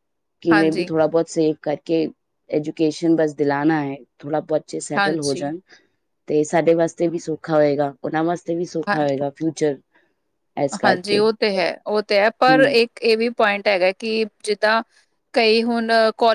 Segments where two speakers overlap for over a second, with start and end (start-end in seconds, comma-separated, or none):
none